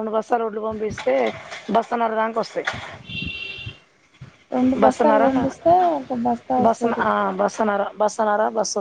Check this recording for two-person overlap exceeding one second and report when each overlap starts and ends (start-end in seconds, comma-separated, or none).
none